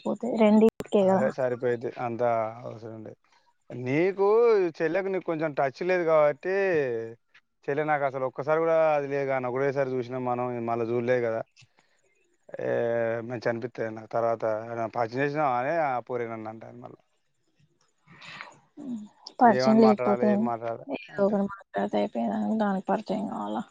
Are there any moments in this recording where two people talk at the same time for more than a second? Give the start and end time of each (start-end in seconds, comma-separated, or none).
19.6-21.3